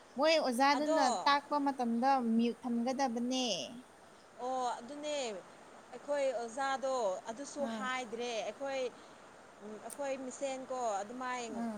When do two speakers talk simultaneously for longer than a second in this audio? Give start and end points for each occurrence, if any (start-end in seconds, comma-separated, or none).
none